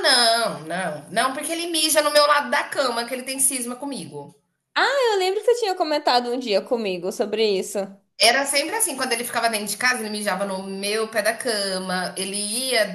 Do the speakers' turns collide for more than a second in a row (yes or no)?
no